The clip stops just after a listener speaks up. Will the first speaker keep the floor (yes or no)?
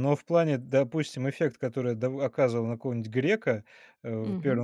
yes